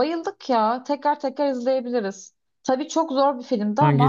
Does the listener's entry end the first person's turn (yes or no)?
no